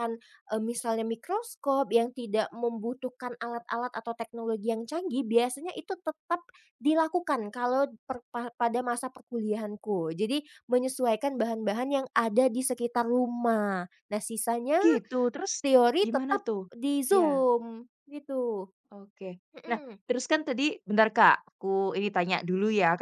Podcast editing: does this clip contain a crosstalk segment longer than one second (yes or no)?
no